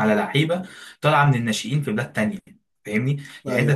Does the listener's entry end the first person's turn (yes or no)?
no